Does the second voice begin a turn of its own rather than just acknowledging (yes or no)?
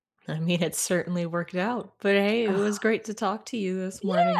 yes